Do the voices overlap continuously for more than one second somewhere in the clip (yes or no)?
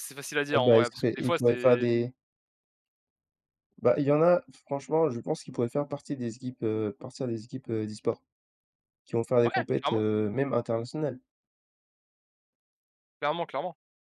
yes